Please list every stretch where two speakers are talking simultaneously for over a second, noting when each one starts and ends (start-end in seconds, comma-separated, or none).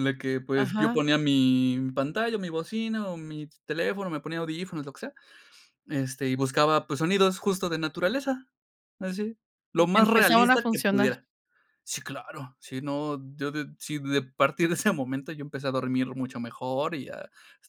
9.8-11.1